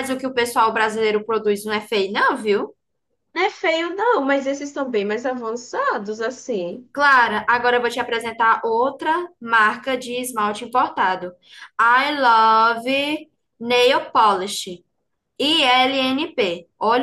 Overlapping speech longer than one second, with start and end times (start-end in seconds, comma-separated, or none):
none